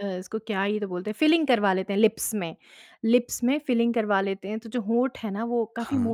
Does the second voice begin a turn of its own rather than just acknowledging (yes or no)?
no